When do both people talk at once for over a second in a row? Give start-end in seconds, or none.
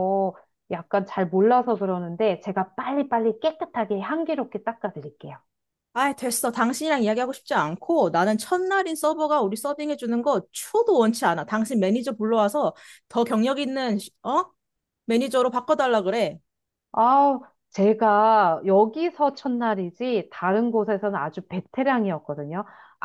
none